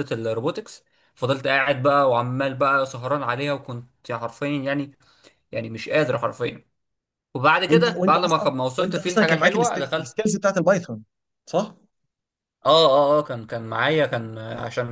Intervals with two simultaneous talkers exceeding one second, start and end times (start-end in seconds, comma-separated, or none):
7.7-10.1